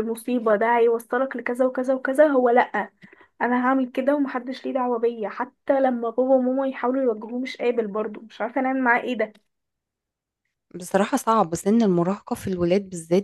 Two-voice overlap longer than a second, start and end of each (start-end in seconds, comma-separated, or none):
none